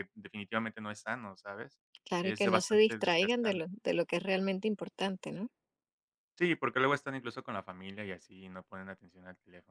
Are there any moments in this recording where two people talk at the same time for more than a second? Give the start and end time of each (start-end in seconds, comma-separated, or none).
2.2-3.6